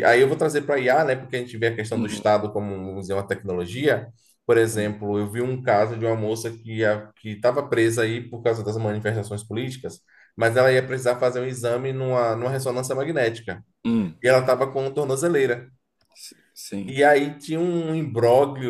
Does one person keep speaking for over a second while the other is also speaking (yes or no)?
no